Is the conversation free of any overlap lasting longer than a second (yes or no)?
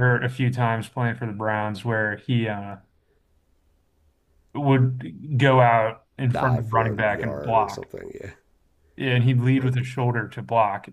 no